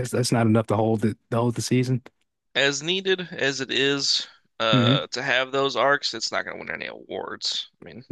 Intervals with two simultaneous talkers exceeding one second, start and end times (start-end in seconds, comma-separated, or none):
none